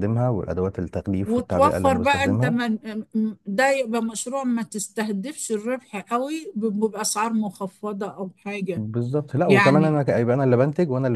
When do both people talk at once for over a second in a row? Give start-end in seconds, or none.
1.2-2.6